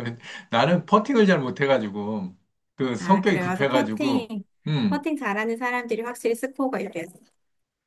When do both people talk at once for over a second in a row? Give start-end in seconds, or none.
3.0-4.3